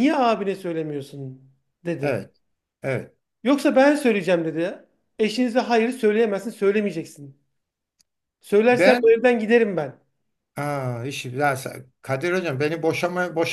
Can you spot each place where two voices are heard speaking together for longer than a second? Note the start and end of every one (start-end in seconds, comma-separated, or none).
none